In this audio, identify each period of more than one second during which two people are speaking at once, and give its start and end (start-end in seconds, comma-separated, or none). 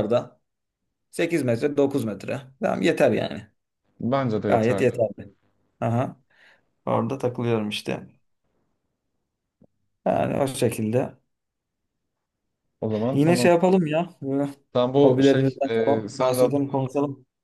15.0-16.8